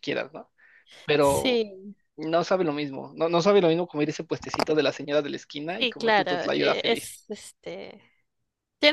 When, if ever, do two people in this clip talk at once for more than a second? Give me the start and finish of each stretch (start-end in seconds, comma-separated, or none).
5.8-7.2